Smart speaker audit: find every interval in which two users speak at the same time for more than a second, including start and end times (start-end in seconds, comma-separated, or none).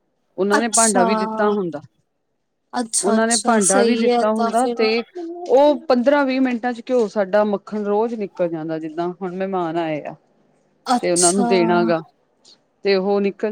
3.0-4.8